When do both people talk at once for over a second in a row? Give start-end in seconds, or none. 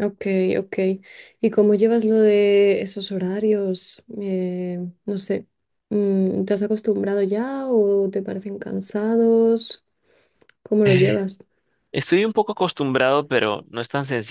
none